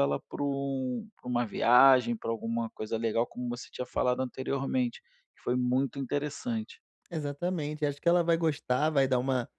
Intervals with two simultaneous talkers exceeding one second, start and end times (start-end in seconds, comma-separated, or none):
none